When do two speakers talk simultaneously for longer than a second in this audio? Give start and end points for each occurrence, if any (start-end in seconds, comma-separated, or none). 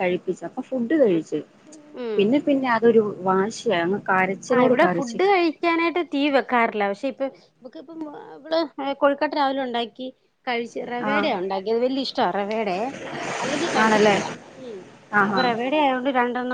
none